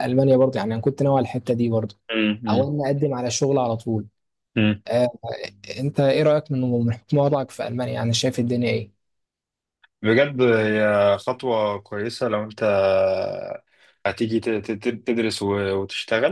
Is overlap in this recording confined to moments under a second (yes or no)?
yes